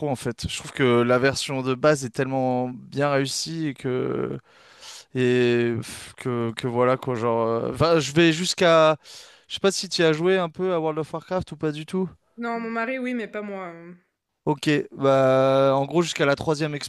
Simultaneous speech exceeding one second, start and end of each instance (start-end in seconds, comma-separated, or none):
none